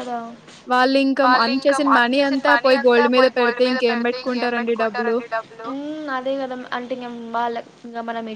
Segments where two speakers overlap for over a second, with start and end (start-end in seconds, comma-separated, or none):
1.2-5.1